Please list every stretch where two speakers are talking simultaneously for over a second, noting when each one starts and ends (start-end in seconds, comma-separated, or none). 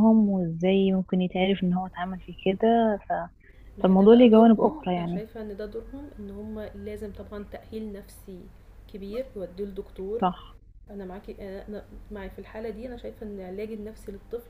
3.8-5.2